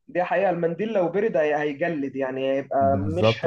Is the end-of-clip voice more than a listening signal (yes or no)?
yes